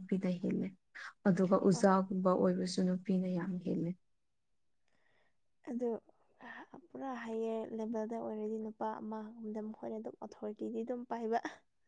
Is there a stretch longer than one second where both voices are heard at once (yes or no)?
no